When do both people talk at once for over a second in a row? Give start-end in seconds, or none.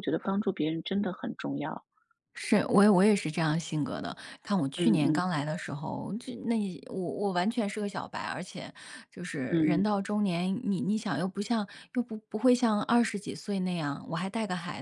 none